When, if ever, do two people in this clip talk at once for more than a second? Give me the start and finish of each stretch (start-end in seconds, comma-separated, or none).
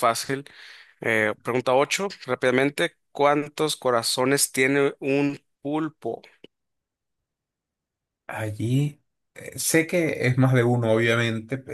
none